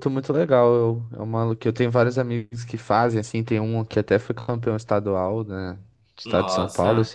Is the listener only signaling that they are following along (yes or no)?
yes